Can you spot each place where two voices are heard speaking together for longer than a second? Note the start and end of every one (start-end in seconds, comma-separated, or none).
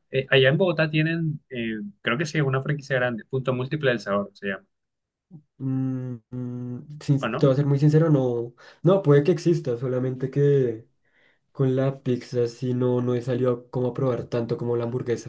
none